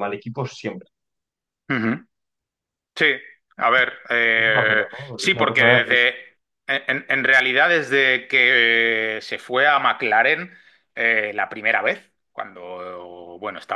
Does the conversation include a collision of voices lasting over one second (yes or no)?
yes